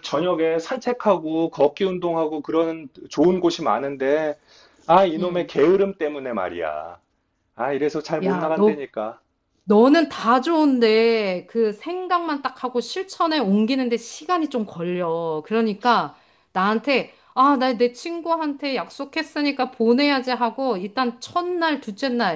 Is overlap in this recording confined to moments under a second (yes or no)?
yes